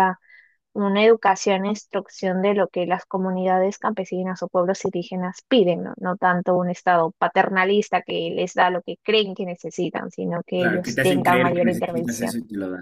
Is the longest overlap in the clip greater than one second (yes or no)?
yes